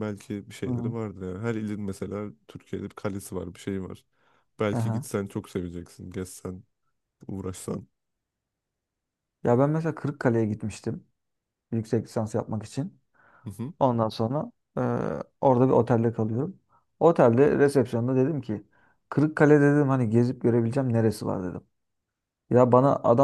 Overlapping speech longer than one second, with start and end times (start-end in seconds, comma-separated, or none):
none